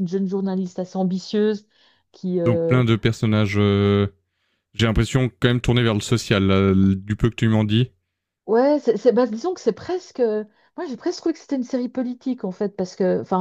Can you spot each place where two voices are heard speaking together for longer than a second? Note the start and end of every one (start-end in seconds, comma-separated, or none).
none